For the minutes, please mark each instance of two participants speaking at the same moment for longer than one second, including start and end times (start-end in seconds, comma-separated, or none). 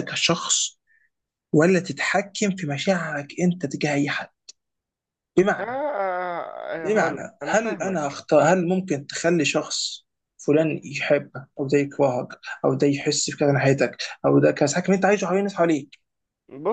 6.8-8.2